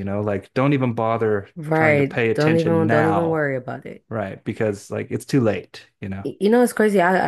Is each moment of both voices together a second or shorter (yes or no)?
no